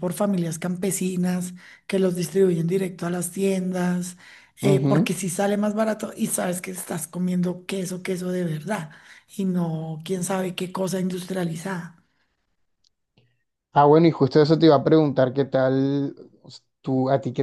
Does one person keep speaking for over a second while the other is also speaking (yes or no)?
no